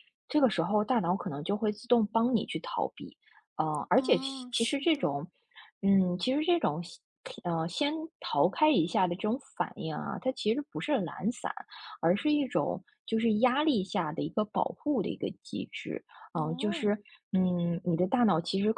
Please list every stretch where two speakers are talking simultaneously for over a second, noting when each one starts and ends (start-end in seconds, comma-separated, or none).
4.0-5.2